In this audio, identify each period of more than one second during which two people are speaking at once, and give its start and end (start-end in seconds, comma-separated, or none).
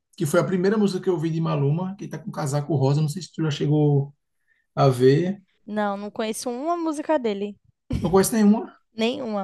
none